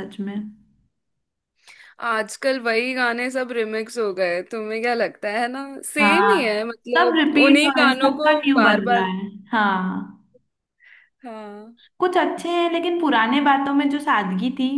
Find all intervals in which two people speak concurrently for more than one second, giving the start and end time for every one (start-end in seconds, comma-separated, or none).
6.0-9.1